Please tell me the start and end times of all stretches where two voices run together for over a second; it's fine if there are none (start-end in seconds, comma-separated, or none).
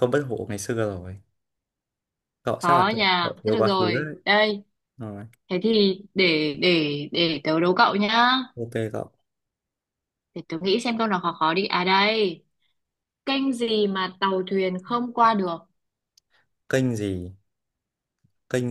2.6-4.1